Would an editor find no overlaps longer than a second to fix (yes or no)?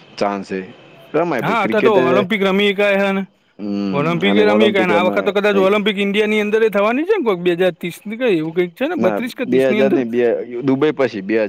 no